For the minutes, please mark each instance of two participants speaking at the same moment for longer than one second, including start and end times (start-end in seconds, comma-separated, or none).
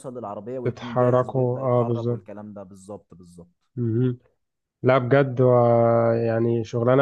0.6-2.3